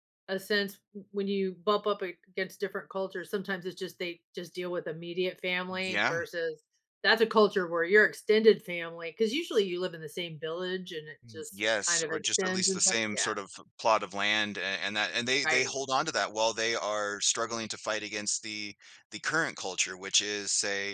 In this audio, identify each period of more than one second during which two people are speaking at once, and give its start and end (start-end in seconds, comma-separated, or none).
11.3-13.3